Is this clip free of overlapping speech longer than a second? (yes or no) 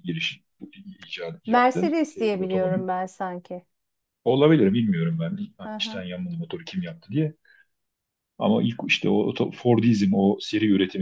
no